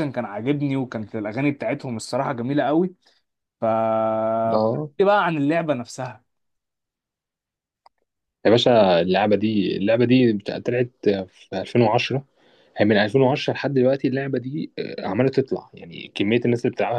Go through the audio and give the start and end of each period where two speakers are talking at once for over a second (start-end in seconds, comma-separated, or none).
none